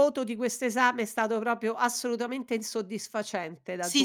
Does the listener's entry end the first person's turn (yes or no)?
yes